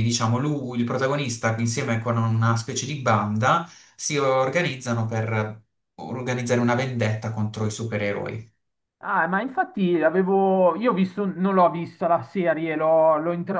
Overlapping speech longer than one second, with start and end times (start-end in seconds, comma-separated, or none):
none